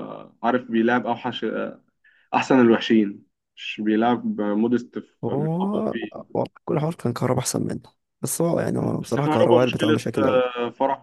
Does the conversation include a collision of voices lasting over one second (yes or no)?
yes